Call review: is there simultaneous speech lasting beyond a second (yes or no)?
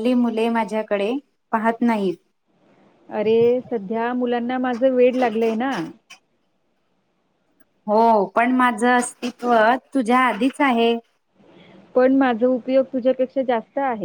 no